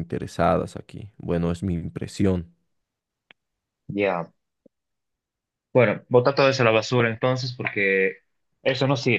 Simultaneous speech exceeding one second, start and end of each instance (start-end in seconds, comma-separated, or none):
none